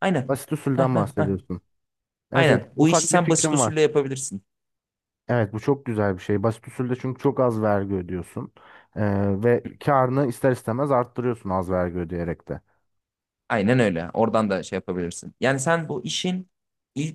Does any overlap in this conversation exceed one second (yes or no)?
yes